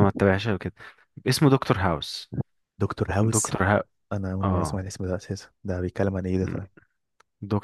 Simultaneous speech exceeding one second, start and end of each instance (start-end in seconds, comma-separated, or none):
none